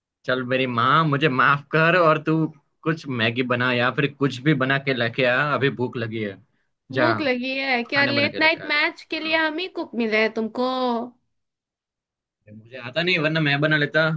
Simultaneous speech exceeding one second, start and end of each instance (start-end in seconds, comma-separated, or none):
7.9-9.5